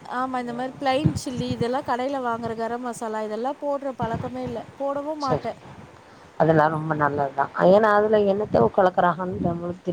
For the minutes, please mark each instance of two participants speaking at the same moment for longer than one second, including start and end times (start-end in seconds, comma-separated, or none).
none